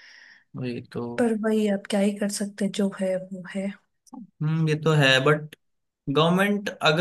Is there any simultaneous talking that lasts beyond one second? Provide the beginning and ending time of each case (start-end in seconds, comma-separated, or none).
none